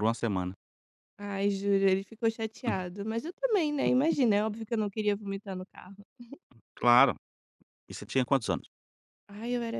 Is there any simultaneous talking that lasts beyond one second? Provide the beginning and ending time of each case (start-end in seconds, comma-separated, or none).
none